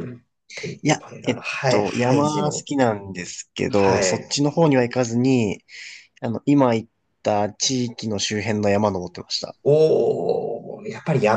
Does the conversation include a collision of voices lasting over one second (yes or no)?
yes